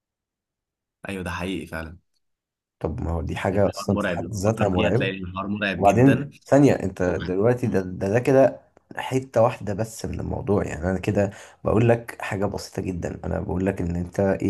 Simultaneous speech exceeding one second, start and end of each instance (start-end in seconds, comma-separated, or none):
3.5-5.1